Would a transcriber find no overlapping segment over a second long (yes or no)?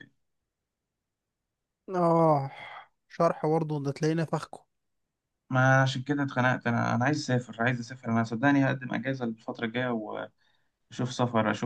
yes